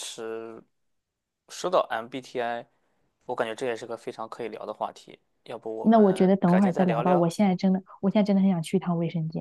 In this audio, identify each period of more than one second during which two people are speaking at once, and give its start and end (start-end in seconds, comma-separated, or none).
5.8-7.4